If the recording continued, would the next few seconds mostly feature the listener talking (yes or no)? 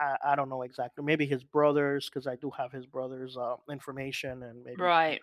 yes